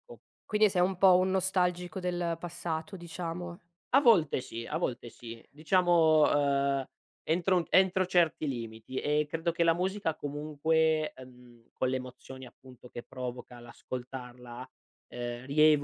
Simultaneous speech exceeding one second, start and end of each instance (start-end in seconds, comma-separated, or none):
none